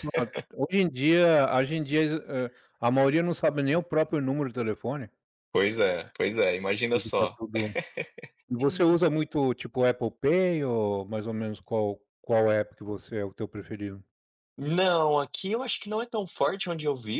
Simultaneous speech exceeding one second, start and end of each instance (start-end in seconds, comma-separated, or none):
none